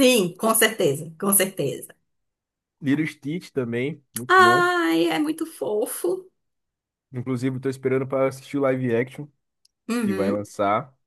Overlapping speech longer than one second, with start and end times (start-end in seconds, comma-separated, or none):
none